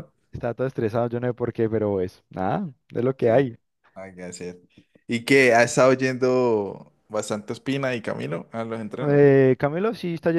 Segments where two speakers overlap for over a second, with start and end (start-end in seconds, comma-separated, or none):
none